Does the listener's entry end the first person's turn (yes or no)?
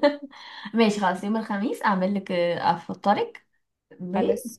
no